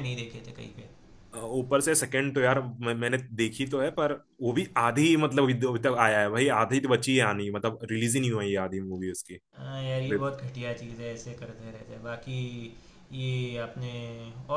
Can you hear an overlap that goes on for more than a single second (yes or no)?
no